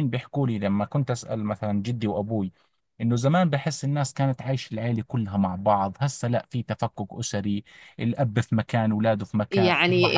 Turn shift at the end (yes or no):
yes